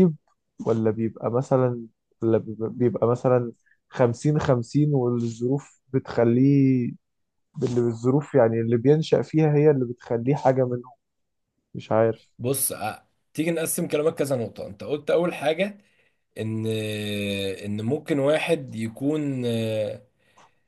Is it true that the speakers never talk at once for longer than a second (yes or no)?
yes